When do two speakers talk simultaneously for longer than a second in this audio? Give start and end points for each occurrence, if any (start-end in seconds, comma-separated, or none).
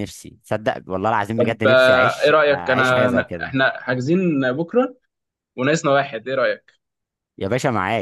1.4-3.5